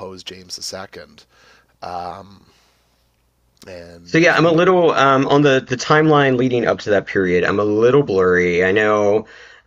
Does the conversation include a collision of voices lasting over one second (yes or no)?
no